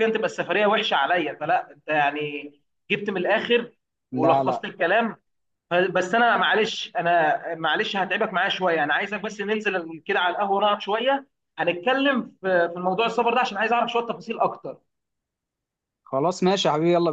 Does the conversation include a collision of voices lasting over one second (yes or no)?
no